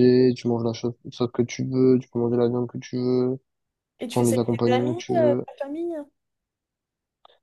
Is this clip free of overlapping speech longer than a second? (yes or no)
no